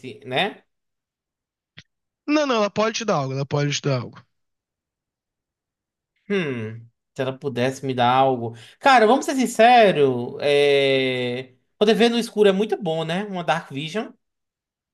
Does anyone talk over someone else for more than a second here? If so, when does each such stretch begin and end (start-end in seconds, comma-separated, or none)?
none